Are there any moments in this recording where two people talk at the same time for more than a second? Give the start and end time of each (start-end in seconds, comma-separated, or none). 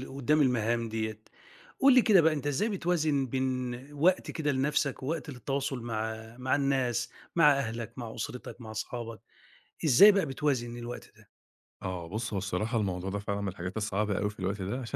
none